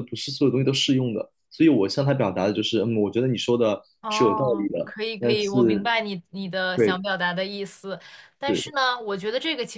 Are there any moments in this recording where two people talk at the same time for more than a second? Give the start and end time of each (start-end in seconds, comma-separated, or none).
4.0-5.9